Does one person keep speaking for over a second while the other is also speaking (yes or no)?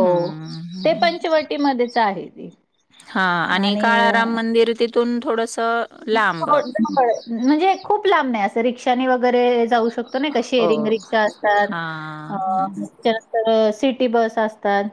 no